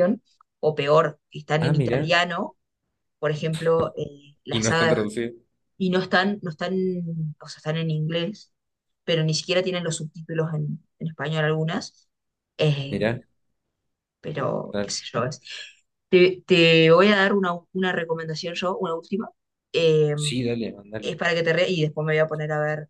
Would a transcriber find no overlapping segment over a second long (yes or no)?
yes